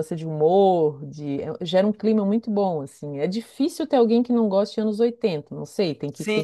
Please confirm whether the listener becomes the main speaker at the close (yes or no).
yes